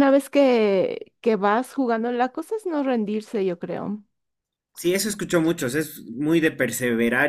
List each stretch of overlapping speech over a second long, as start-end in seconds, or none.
none